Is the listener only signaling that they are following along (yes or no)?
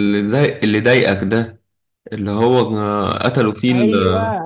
no